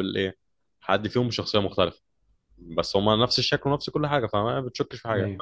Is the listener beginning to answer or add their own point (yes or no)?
yes